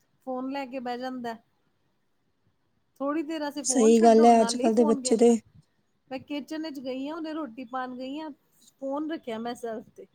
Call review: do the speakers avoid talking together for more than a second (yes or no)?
no